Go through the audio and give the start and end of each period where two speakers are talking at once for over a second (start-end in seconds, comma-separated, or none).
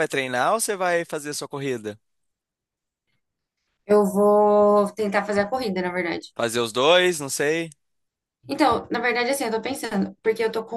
none